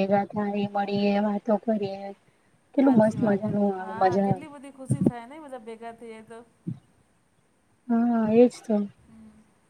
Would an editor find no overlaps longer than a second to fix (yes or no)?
no